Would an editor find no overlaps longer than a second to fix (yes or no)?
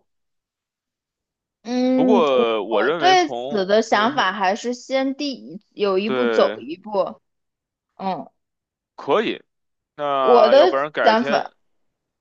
no